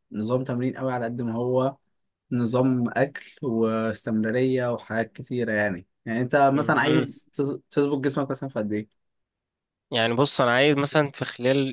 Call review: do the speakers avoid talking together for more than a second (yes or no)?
yes